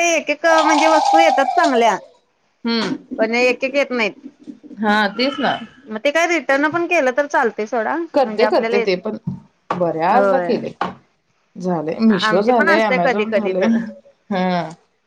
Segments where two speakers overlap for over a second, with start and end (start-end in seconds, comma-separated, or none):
12.2-13.8